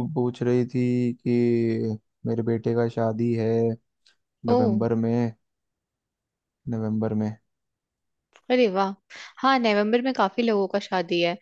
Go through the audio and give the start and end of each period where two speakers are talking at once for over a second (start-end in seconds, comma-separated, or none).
none